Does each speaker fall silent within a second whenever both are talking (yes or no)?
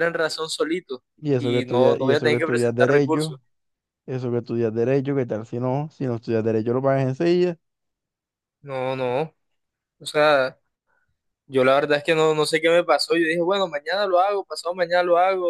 no